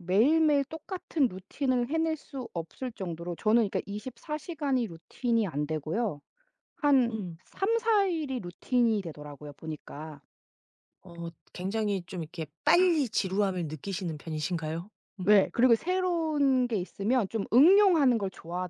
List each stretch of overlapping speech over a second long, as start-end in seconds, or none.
none